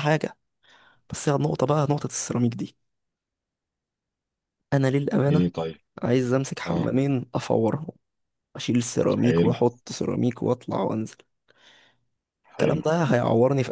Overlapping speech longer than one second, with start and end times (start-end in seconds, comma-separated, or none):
none